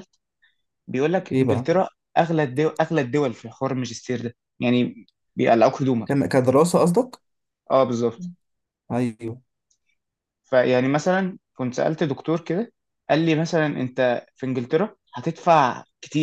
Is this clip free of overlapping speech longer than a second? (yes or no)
yes